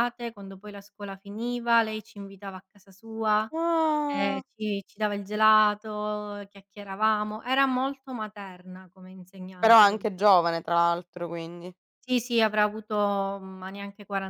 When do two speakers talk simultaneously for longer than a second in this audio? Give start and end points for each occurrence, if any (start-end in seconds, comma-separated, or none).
none